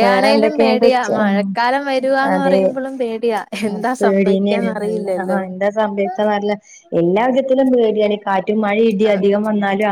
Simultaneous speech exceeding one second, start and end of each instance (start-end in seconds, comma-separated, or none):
3.7-5.4